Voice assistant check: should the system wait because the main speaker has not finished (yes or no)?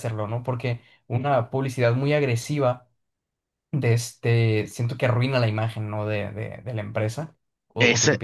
no